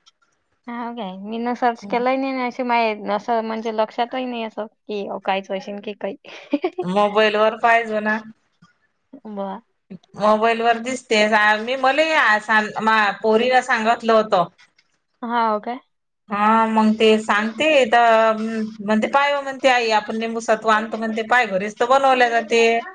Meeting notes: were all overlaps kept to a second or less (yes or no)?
yes